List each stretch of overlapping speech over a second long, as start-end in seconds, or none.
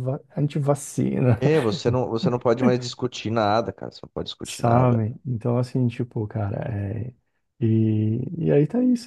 none